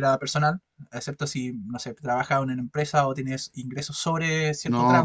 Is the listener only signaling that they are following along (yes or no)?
no